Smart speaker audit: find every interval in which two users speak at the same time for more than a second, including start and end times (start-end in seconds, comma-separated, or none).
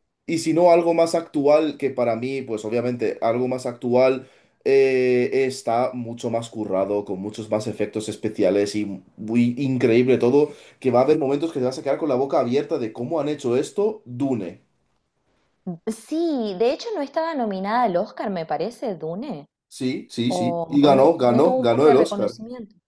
20.3-22.4